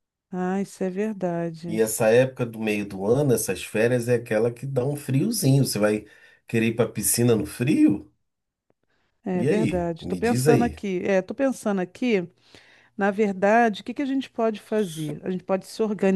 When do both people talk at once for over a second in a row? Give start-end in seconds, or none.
9.3-10.8